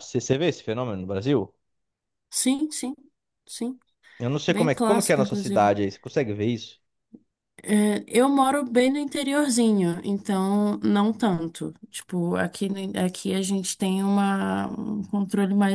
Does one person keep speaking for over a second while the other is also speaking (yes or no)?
yes